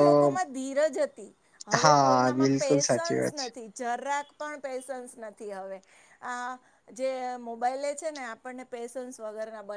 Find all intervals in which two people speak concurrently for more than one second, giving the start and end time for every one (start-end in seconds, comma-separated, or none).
1.8-3.5